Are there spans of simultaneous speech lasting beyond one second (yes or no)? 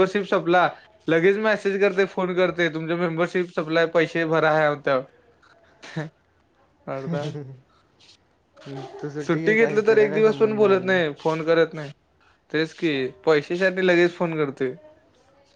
yes